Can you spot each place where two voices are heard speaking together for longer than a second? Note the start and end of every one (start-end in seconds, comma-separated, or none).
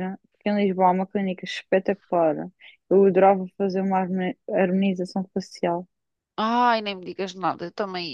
none